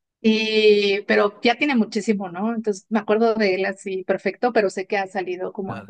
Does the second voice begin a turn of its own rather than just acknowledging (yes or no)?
yes